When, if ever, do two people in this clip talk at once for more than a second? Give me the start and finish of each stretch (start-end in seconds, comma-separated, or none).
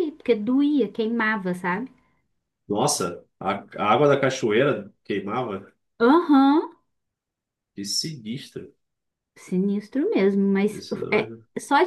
none